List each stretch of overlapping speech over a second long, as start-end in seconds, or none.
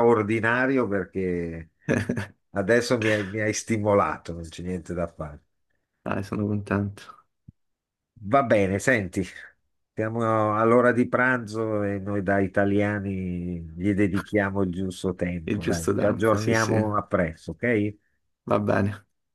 15.5-16.7